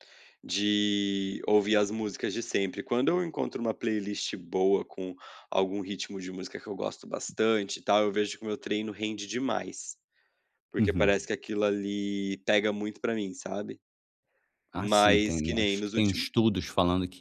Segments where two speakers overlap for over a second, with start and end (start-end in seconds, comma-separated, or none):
14.8-16.3